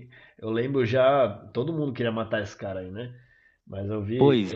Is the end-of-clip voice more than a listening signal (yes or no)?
no